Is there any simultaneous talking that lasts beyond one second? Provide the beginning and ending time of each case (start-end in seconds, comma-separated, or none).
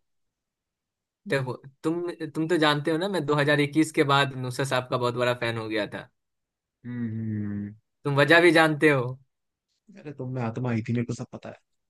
none